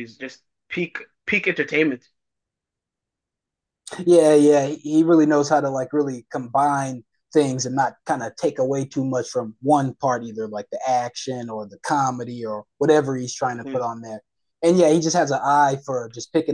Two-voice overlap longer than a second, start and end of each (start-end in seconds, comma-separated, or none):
none